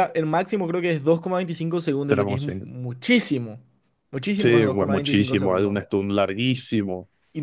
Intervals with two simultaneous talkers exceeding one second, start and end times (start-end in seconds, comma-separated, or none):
4.4-5.8